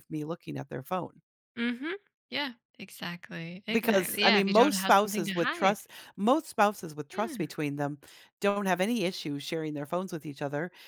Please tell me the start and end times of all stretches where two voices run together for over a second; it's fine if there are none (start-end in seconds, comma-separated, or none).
3.7-5.8